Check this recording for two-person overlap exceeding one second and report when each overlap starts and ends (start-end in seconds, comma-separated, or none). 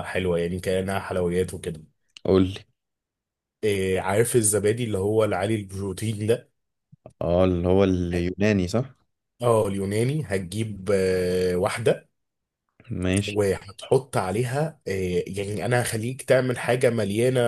none